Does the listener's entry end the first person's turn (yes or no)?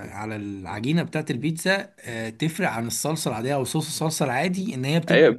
yes